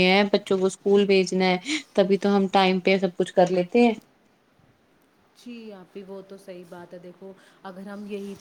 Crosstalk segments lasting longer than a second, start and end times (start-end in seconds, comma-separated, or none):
none